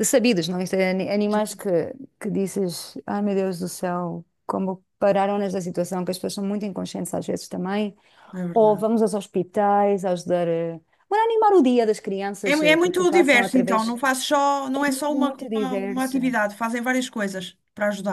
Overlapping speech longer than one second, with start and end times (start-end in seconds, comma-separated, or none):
12.4-14.0, 14.8-16.4